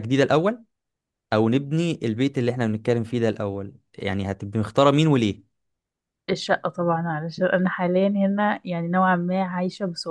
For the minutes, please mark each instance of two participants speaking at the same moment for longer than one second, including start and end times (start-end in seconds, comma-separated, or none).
none